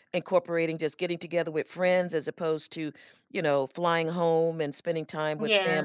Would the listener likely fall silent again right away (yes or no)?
yes